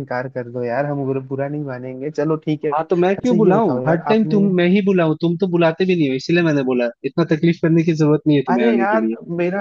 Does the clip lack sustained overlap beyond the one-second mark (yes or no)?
no